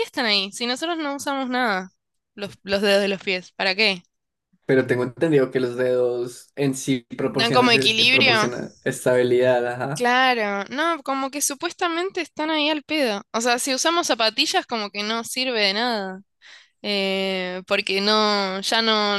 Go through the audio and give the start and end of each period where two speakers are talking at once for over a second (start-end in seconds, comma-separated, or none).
7.3-8.5